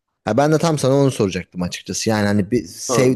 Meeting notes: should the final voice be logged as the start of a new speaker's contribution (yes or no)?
no